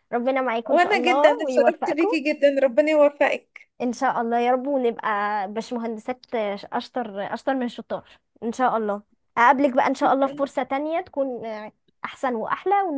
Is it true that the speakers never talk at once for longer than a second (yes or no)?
no